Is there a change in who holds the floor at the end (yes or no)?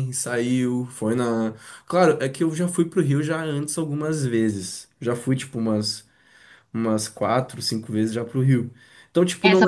yes